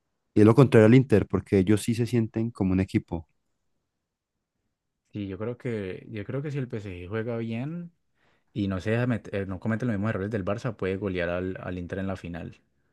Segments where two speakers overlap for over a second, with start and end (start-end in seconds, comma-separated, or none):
none